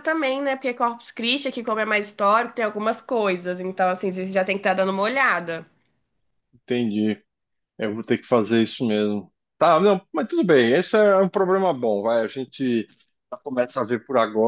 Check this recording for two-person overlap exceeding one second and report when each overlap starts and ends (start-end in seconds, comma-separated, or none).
none